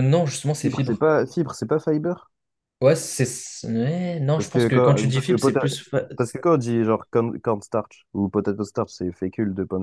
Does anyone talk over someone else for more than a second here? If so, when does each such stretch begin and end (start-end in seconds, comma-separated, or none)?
4.3-5.7